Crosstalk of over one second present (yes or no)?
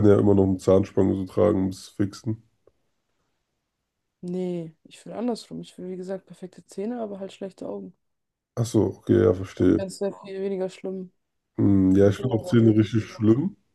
yes